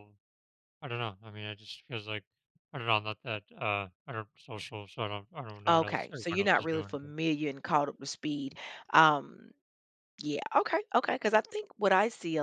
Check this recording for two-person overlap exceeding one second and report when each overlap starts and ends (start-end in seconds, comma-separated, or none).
5.7-7.0